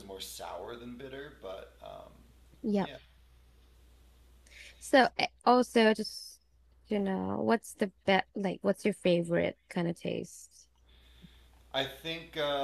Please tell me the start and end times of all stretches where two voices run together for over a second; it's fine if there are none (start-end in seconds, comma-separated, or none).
none